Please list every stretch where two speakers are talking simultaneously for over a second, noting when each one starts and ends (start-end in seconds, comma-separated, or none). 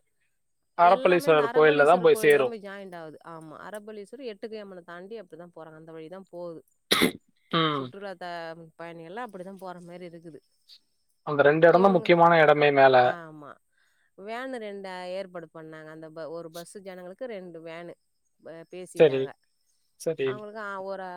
0.9-2.4